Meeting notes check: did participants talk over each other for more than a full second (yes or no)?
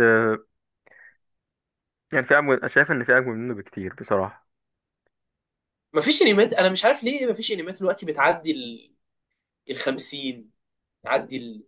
no